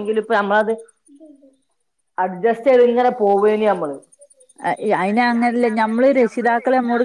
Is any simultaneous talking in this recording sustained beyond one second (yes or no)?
no